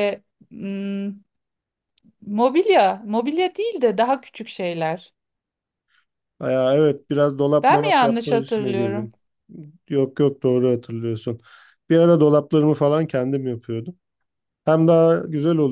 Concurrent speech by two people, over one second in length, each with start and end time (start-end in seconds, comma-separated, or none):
7.6-9.1